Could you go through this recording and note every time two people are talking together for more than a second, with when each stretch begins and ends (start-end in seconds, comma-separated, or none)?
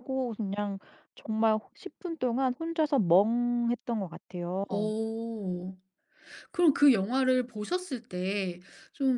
none